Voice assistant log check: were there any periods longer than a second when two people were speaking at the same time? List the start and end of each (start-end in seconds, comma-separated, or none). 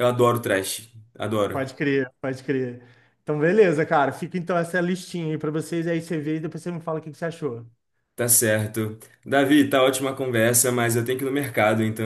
none